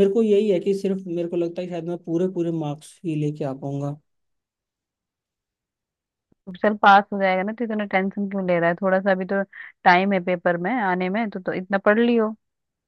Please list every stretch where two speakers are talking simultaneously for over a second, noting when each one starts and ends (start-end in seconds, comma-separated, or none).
none